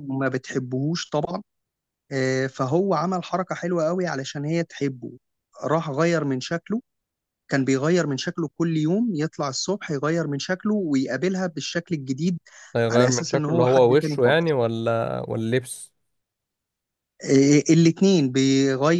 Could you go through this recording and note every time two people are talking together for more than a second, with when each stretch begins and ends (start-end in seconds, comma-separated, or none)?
12.9-14.5